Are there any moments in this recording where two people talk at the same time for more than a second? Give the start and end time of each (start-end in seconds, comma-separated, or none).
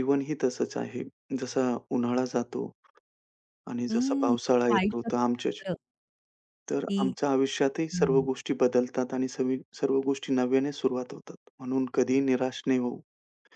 3.9-5.6